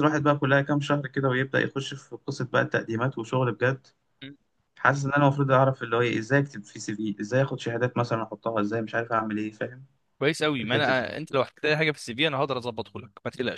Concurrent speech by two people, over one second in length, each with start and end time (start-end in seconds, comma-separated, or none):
none